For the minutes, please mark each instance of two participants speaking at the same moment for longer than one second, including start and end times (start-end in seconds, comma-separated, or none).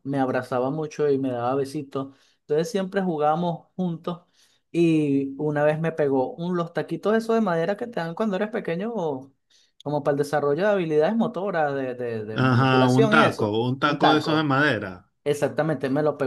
12.3-14.5